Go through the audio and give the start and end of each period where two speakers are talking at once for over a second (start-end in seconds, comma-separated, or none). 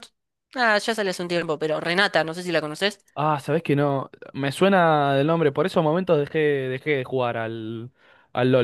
none